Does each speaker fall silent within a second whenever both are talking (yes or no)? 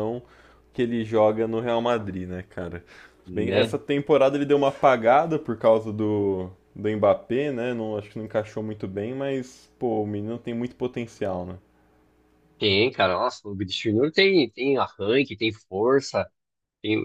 yes